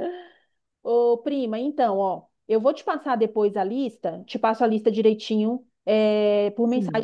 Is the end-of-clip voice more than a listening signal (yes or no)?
no